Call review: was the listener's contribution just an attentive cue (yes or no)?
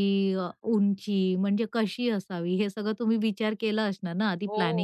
no